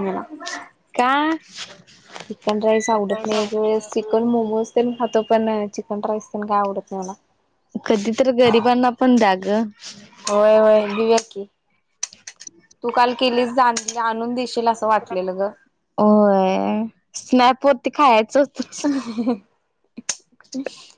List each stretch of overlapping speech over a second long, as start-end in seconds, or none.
none